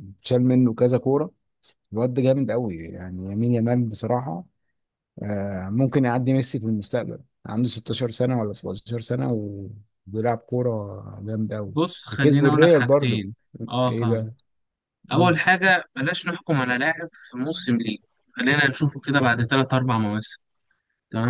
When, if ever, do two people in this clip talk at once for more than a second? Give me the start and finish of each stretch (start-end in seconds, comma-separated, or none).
11.7-13.2